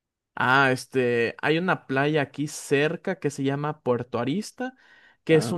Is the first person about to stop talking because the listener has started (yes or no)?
no